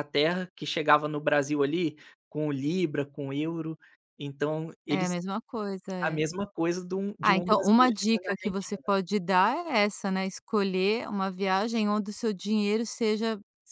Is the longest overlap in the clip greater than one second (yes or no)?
yes